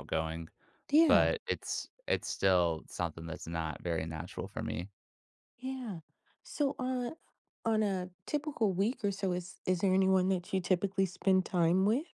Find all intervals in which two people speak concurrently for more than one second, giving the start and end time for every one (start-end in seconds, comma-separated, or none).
none